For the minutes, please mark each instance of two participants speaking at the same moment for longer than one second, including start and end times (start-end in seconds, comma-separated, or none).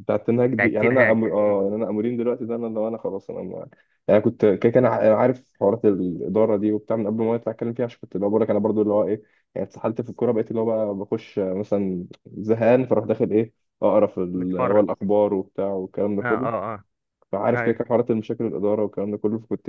0.5-1.8